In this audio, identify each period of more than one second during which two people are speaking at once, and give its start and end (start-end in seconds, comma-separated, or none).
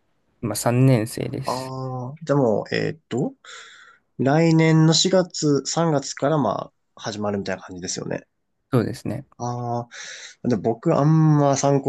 none